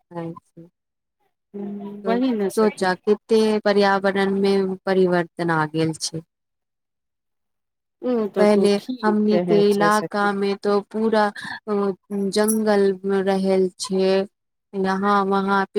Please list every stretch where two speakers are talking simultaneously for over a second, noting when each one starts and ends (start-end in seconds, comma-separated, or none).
8.4-10.3